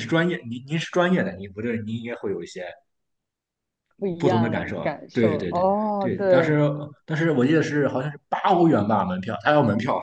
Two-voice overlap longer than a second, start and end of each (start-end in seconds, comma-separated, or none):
4.2-6.5